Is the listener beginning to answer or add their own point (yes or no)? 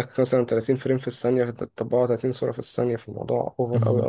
yes